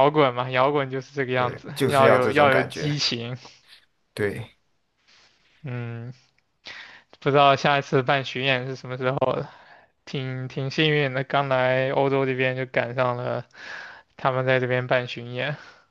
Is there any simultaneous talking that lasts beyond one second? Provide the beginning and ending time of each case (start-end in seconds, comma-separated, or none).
1.3-3.0